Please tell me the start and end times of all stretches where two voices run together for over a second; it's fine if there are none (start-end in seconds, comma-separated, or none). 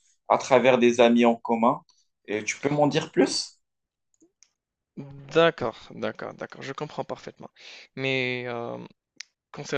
none